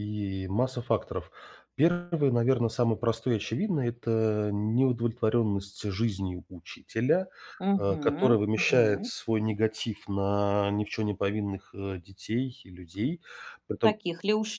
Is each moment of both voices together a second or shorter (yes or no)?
no